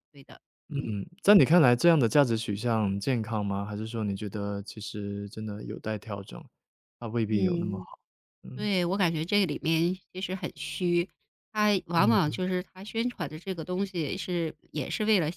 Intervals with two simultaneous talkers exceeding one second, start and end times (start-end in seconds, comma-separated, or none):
none